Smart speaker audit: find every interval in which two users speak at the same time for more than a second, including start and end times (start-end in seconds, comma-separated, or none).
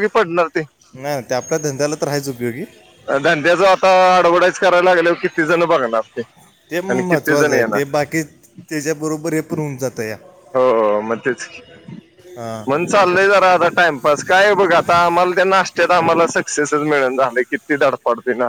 none